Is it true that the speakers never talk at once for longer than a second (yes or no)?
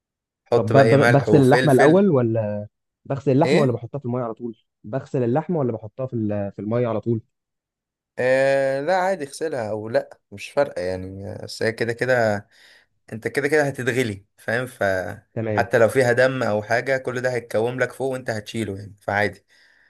no